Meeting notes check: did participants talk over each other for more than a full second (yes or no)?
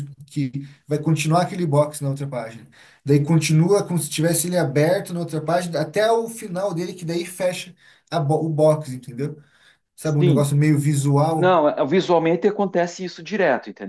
no